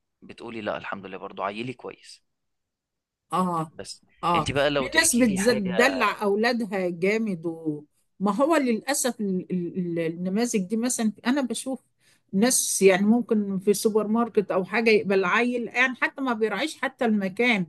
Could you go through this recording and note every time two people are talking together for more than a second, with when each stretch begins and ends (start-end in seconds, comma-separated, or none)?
4.2-5.7